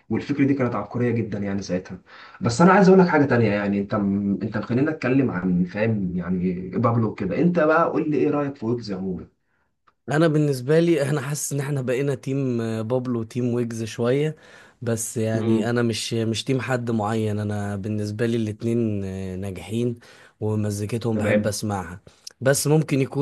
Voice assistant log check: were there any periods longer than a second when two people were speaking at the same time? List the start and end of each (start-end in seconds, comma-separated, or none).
none